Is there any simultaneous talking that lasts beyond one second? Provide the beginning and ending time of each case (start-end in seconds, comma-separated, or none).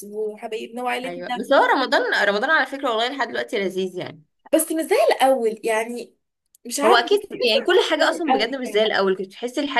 6.8-8.9